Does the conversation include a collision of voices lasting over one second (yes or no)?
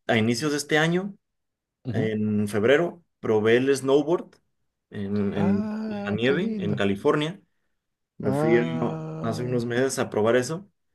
yes